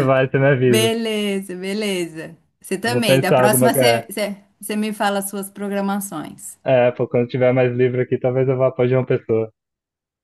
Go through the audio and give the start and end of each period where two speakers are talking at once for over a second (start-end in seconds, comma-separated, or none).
2.8-4.1